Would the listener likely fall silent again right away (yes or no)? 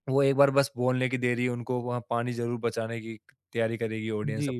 no